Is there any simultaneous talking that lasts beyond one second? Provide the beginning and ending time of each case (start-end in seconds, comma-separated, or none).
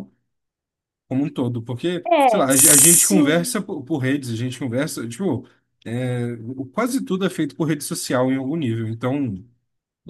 2.1-3.6